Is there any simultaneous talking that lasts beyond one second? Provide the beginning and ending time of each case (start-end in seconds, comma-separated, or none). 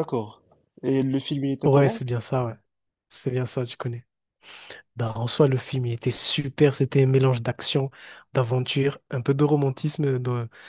none